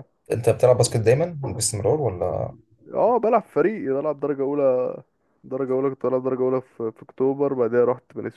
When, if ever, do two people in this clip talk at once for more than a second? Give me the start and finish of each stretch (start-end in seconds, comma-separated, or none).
none